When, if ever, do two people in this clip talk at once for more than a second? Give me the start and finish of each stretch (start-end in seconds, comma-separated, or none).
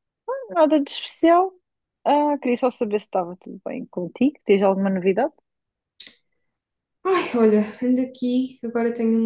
none